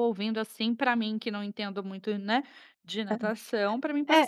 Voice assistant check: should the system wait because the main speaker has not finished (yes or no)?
no